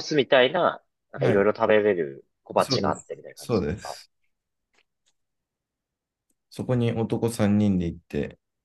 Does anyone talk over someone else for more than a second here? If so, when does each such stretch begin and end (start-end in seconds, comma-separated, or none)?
2.6-4.0